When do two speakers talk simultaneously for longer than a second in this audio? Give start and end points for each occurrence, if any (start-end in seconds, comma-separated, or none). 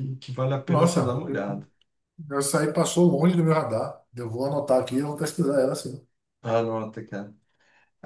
none